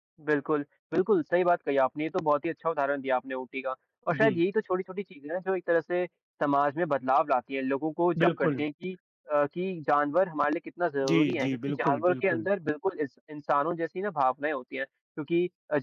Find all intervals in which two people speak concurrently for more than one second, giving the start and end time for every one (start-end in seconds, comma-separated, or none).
11.1-12.5